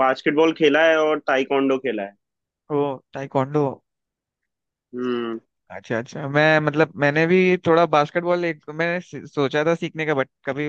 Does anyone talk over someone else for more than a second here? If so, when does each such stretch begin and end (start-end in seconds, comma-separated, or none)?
none